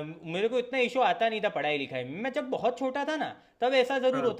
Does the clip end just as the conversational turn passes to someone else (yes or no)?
no